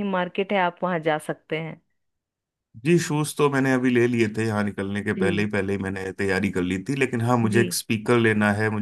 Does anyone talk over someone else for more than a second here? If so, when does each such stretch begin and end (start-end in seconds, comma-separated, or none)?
none